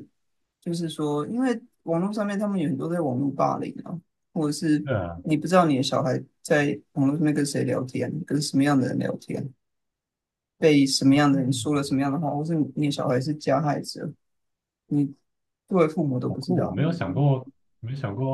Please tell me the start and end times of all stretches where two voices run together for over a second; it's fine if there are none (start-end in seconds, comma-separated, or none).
none